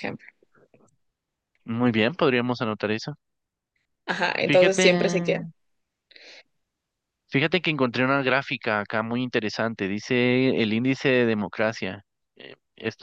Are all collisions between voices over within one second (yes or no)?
yes